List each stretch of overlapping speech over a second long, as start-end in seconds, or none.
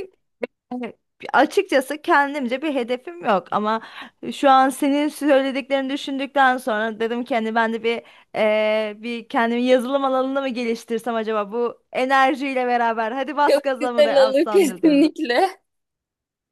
13.5-15.1